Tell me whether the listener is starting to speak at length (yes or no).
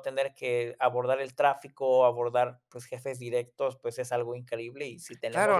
yes